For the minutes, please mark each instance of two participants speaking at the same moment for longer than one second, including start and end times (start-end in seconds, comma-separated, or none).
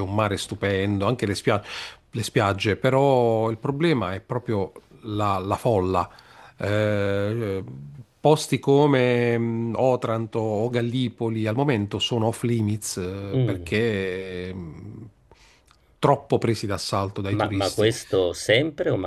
none